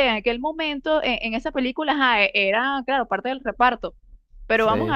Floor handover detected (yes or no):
no